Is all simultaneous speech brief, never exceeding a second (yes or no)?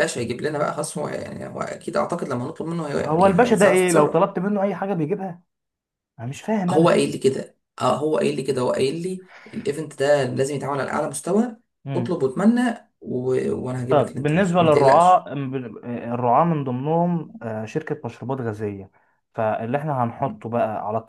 no